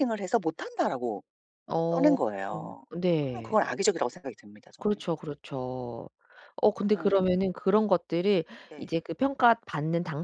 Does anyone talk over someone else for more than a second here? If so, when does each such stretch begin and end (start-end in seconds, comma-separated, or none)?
none